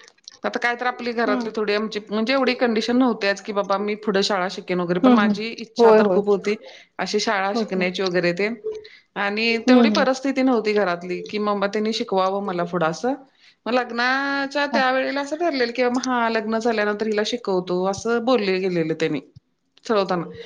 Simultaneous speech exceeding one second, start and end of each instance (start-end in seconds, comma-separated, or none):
none